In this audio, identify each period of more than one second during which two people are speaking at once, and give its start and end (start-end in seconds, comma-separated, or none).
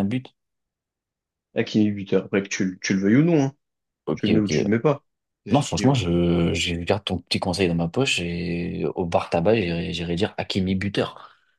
none